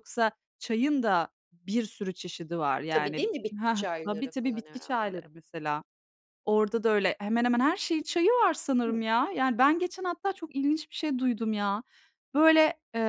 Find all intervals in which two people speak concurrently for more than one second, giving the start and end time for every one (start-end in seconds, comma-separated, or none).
2.9-5.2